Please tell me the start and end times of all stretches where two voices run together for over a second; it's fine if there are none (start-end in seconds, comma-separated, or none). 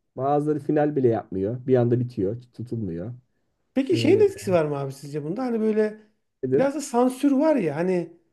none